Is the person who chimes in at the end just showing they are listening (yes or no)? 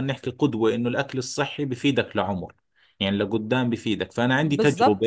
yes